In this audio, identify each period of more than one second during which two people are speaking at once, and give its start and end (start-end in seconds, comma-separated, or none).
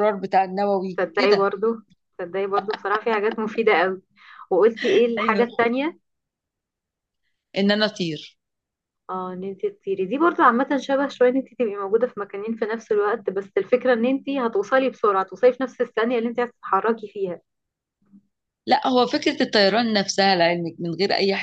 none